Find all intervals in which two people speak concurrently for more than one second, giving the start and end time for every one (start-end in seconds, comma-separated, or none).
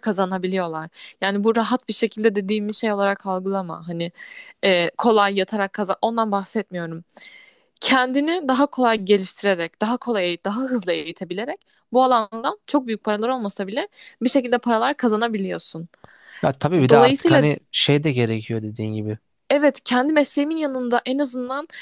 none